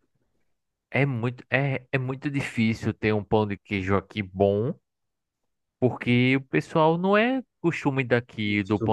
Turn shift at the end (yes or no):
no